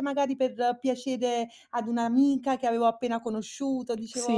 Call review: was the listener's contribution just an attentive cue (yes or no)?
no